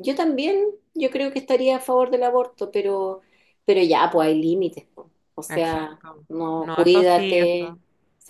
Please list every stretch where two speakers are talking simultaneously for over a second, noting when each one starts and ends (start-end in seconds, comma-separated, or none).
5.5-7.8